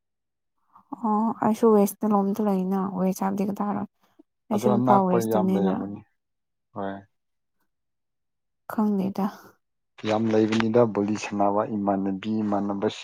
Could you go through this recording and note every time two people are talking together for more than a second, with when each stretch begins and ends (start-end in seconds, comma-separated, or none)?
4.5-5.7